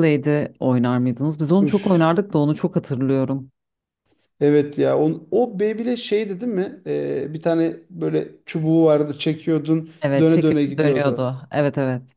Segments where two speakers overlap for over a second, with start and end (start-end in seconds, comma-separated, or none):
10.0-11.3